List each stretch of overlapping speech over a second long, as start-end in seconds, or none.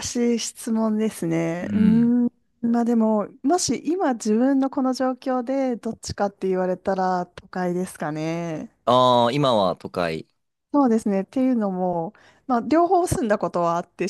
none